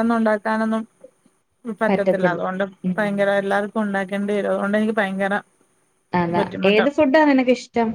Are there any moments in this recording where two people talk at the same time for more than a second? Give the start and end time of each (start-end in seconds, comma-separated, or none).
none